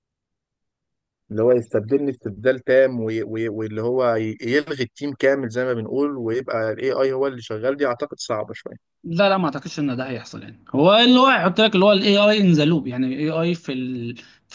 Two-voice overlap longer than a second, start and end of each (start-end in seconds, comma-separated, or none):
none